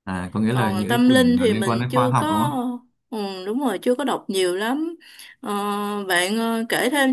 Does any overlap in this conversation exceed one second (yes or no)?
yes